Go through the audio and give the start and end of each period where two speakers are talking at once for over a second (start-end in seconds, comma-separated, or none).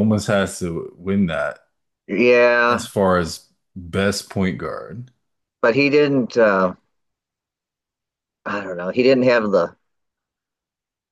none